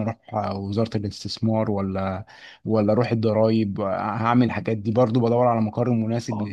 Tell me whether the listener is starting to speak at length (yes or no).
no